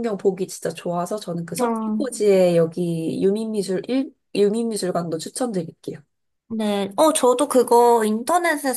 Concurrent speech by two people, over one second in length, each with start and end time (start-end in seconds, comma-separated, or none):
none